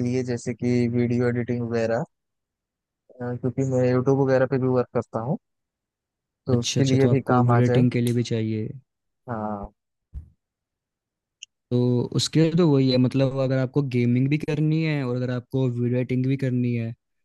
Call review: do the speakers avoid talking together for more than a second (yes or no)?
no